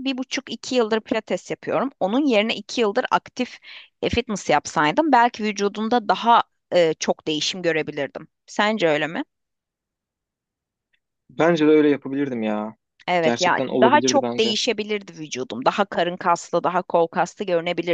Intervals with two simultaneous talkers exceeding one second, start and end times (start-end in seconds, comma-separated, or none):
13.2-14.6